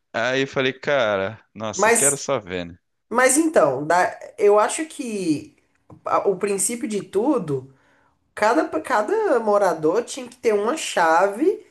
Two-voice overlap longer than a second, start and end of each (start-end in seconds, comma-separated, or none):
none